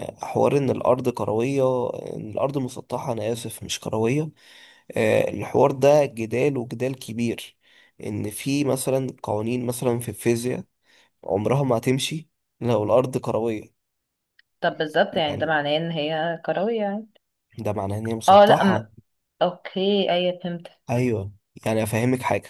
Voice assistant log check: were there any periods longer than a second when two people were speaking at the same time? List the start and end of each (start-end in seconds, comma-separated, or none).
none